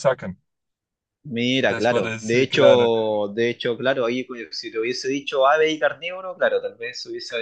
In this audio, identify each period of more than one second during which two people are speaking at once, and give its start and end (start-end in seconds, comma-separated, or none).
1.6-2.9